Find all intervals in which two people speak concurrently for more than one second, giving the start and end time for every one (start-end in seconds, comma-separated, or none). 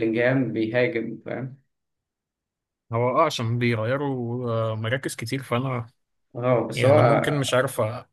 none